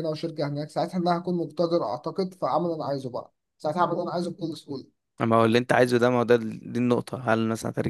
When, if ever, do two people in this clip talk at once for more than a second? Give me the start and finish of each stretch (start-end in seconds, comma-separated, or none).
none